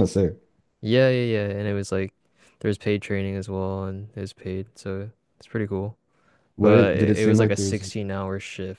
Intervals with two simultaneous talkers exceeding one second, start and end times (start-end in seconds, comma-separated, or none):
6.6-7.8